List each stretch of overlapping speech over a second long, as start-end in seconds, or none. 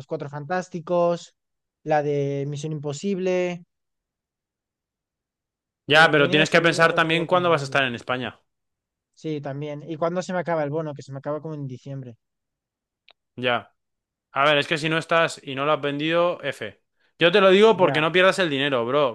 5.9-7.8